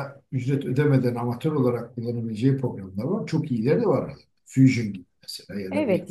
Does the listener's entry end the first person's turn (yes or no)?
yes